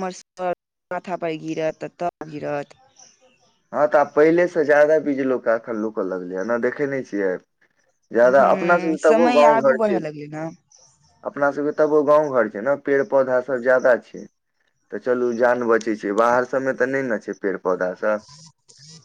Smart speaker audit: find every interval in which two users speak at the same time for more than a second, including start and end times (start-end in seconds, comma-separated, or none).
8.2-9.9